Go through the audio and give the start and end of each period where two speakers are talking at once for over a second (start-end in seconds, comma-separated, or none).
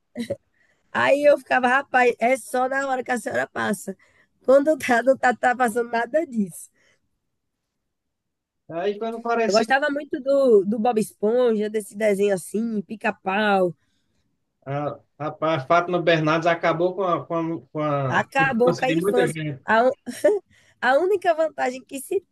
18.1-19.6